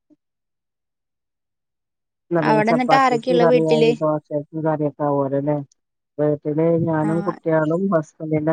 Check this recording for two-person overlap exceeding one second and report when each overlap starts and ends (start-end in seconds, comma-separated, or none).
2.5-3.9